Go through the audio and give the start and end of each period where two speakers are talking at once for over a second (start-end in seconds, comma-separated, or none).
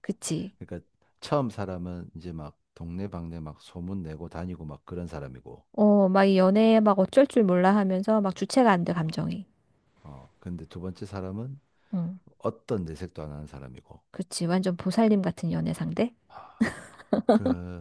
none